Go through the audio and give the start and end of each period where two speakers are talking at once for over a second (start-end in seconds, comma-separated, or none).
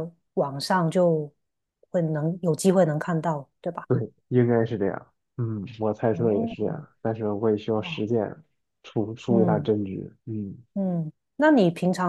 none